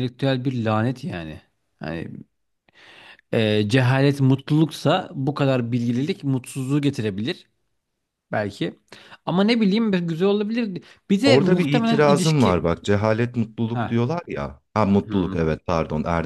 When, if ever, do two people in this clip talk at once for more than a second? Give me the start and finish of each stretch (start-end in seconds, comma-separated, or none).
11.2-12.6